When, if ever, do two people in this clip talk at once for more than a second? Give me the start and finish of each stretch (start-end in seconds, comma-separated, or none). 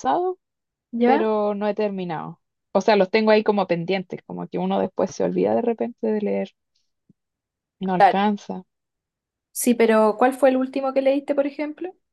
none